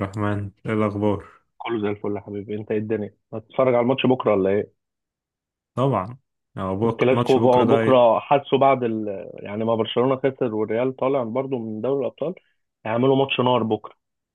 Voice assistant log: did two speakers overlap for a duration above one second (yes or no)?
yes